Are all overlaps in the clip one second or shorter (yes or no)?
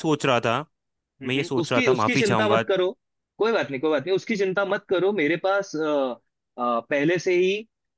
no